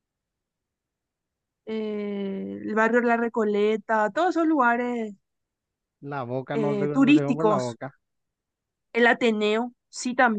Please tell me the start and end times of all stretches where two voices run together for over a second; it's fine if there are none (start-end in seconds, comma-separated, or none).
6.5-7.8